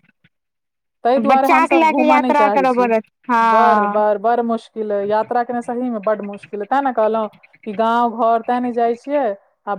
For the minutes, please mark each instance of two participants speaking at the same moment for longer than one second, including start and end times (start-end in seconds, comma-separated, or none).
1.3-2.9